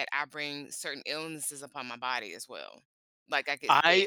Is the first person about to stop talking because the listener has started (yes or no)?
yes